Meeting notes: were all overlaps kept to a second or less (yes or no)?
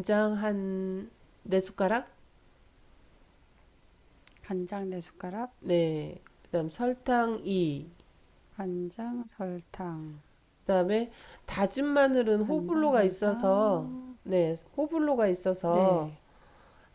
no